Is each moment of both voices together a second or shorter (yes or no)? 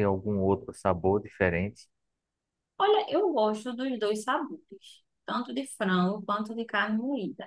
yes